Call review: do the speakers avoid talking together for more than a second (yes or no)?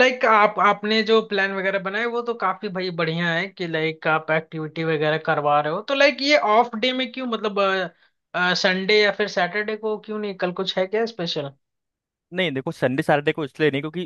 yes